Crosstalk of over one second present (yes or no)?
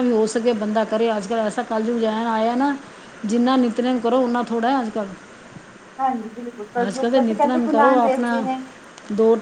yes